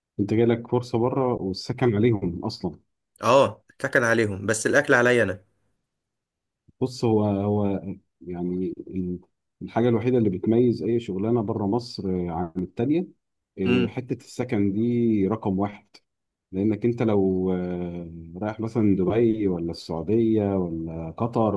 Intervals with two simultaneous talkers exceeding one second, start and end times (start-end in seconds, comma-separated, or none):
none